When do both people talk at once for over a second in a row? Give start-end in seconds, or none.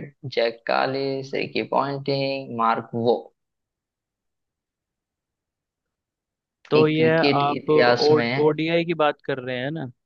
6.8-8.6